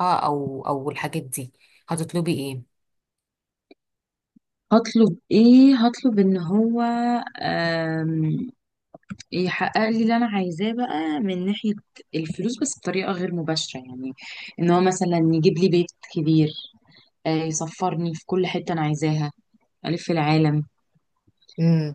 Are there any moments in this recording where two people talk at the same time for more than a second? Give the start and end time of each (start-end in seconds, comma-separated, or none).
none